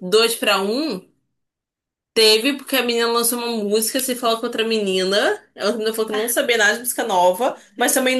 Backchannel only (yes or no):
yes